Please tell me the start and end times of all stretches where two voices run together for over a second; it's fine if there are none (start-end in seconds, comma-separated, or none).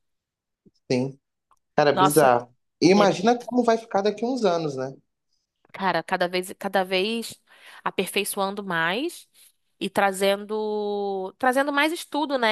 none